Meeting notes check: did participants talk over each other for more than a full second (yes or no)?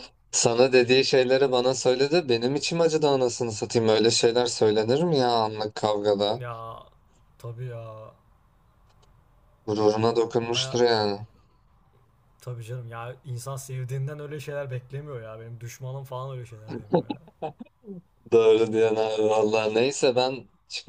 no